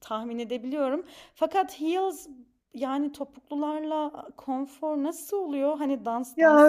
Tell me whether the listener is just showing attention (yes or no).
no